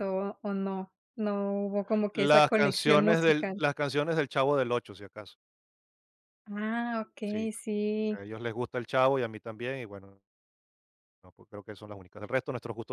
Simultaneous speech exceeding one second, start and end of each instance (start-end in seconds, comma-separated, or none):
2.1-3.6